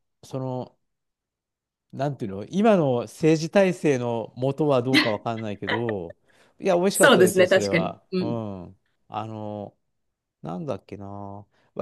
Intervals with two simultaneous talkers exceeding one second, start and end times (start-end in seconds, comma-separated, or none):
6.9-8.4